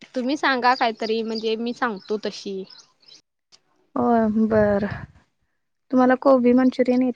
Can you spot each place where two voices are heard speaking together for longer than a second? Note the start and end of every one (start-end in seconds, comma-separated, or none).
none